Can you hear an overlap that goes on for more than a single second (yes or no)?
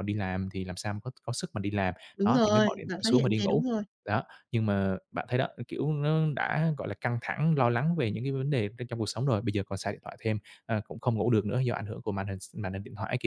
yes